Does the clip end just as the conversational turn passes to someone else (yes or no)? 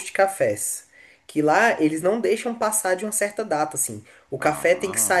no